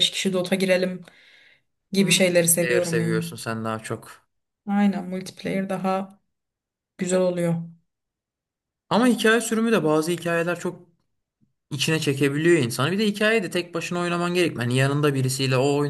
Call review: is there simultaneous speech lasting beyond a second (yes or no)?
yes